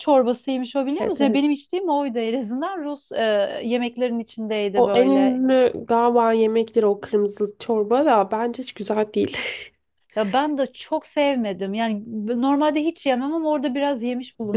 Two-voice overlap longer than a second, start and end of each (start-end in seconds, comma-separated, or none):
none